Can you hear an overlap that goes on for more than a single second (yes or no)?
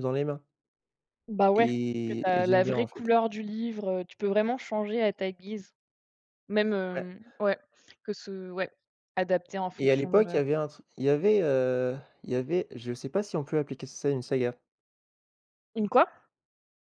yes